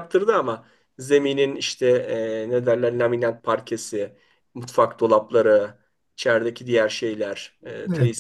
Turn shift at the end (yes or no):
yes